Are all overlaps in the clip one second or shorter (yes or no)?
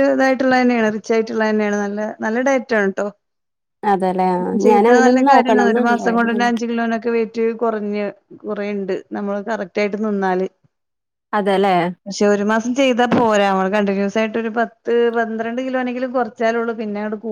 no